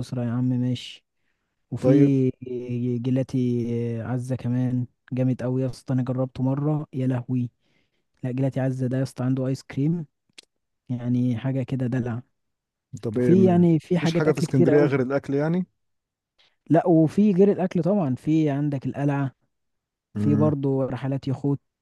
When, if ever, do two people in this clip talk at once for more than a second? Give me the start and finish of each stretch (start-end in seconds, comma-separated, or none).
13.2-14.9